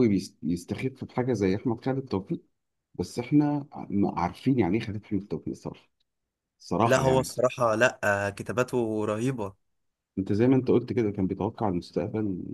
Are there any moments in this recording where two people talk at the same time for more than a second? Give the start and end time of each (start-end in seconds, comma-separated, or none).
none